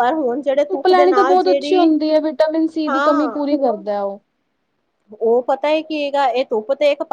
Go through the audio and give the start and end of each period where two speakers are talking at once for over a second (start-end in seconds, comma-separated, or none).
0.7-1.9